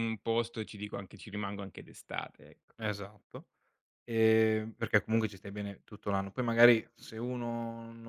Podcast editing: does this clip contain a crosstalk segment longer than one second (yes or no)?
no